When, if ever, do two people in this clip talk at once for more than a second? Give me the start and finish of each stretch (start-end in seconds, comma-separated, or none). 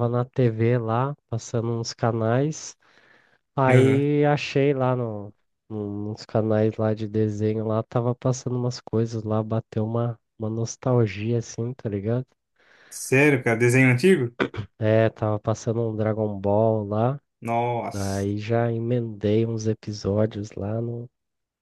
none